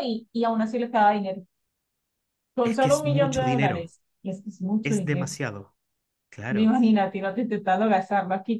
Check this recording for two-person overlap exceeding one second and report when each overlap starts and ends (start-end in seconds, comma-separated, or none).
2.6-3.9